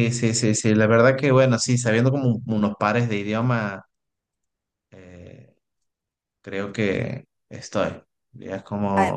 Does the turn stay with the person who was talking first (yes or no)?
yes